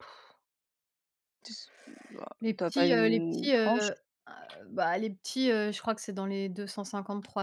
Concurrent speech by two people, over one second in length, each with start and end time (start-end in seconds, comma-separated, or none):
2.4-3.9